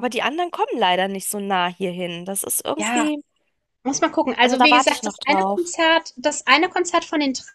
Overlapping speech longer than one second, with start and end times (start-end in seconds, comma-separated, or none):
4.4-5.7